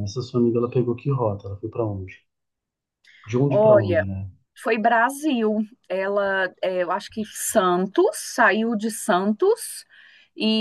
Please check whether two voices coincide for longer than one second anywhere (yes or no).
no